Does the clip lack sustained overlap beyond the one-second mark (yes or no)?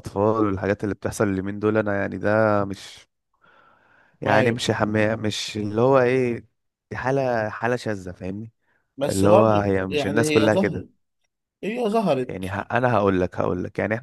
no